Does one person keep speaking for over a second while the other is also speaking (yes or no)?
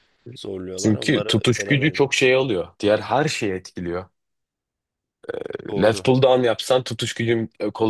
yes